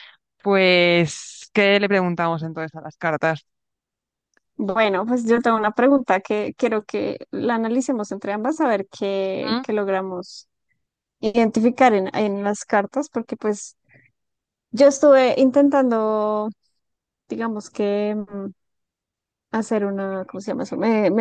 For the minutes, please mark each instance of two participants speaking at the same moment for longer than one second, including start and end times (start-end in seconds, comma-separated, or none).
none